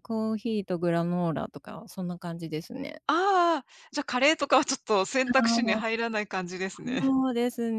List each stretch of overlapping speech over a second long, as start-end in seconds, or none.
none